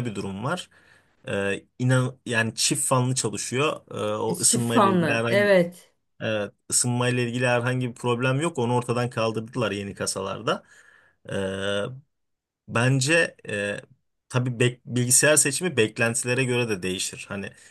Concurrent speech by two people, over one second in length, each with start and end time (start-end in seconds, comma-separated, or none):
4.3-5.6